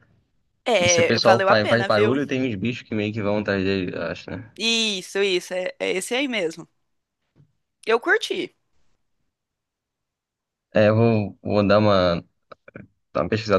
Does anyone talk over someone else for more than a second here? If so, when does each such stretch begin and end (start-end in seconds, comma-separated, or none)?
0.8-2.1